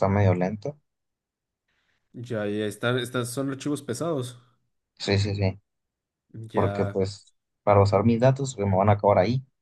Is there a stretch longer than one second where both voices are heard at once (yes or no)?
no